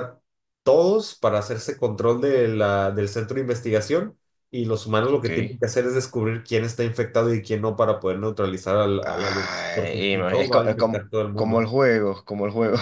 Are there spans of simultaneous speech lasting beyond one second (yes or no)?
yes